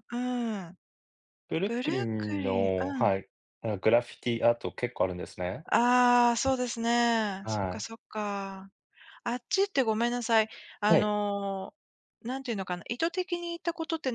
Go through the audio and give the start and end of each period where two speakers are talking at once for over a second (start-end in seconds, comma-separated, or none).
1.6-3.1